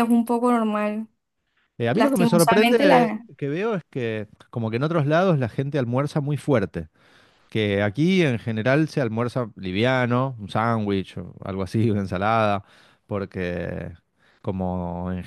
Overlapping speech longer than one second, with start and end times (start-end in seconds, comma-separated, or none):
1.9-3.3